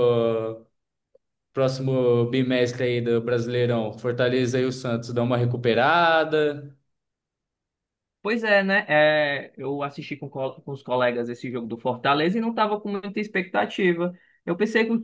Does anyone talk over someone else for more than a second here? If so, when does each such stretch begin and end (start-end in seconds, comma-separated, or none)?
none